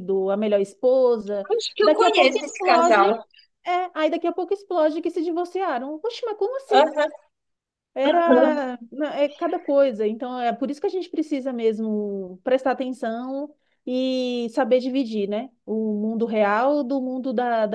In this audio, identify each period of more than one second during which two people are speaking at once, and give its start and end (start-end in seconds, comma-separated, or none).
1.5-3.0